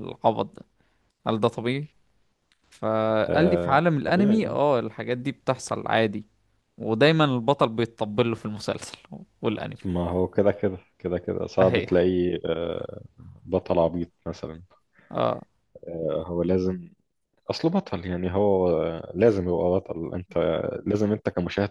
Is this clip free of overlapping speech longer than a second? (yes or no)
no